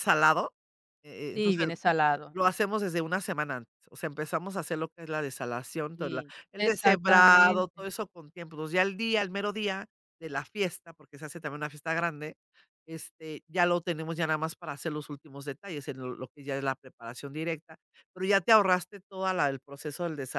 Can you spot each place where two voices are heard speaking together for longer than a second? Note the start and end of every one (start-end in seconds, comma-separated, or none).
6.0-7.8